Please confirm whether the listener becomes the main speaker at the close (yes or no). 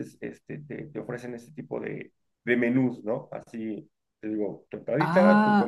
yes